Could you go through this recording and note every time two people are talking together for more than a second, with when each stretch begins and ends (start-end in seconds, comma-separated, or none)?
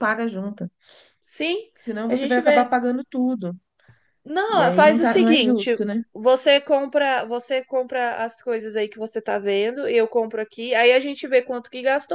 4.5-5.8